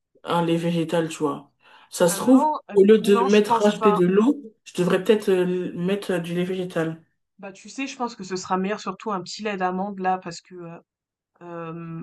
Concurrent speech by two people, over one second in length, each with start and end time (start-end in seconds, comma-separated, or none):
2.1-4.0